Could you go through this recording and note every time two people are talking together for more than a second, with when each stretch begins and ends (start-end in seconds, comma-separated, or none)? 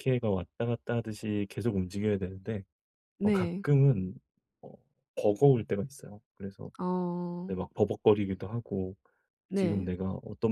none